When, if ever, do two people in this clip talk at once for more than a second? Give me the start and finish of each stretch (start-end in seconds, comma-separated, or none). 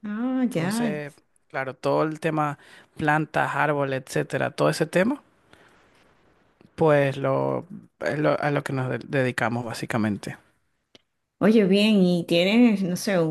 none